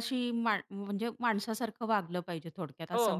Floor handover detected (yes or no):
yes